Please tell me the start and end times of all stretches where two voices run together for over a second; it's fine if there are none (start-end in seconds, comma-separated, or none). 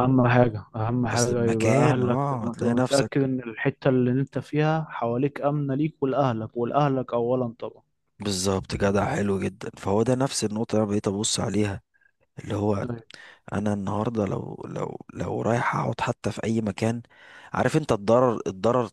1.1-3.1